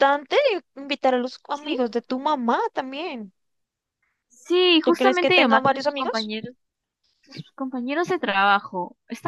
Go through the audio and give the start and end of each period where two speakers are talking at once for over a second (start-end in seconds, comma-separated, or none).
4.8-6.3